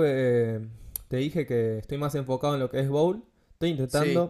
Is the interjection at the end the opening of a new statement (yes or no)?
no